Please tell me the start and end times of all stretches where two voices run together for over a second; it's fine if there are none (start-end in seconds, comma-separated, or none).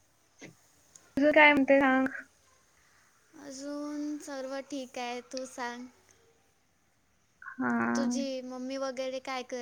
none